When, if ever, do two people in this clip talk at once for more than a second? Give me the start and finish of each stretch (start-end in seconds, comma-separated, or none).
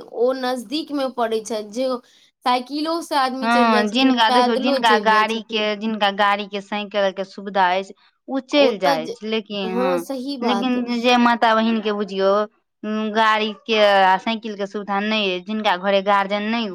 3.4-5.6